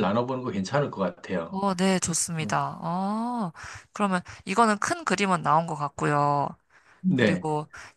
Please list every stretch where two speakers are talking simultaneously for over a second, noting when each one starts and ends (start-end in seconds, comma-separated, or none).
none